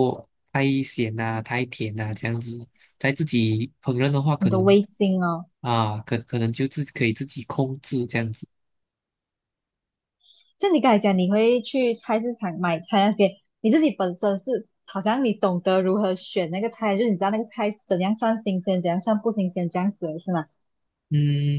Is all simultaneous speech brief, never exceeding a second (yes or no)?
yes